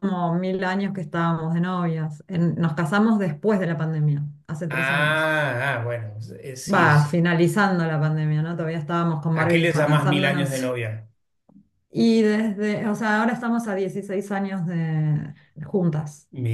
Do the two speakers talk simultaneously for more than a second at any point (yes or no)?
yes